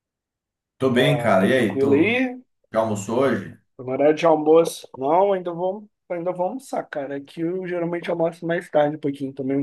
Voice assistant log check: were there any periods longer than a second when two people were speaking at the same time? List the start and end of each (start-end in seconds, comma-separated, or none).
0.9-2.2